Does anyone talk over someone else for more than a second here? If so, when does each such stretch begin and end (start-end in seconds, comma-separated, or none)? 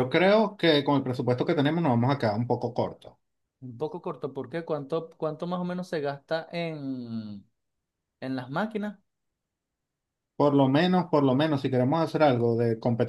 none